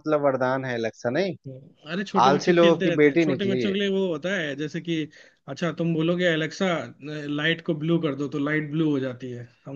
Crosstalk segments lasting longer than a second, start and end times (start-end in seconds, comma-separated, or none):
2.3-3.8